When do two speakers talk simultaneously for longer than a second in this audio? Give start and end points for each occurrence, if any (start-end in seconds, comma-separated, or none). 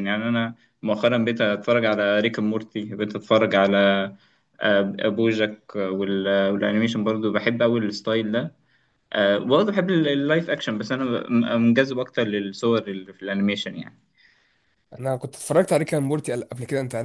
none